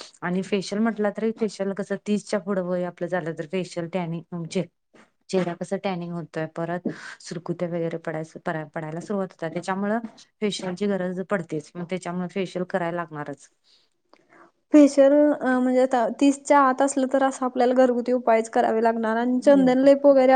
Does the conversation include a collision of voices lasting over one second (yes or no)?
no